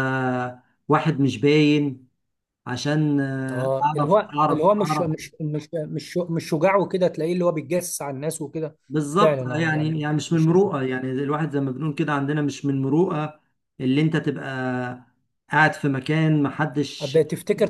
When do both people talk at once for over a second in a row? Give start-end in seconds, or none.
3.5-5.1, 9.2-10.7